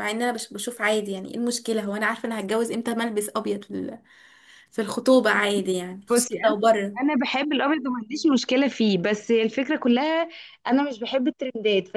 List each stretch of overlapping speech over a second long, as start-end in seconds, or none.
none